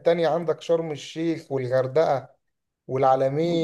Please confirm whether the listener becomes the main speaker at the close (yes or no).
no